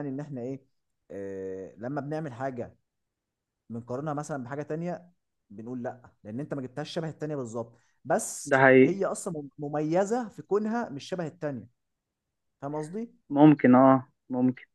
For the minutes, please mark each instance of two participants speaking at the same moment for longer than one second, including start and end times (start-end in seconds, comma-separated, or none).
none